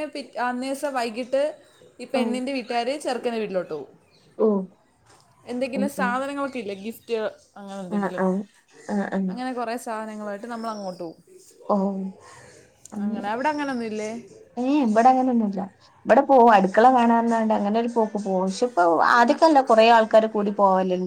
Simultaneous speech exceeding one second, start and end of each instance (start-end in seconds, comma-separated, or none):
none